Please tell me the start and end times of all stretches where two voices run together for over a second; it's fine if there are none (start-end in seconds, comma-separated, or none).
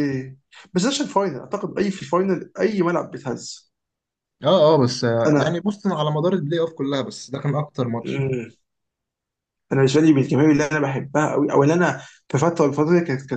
none